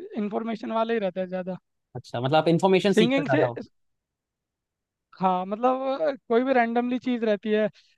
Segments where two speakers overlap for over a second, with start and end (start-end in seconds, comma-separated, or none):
none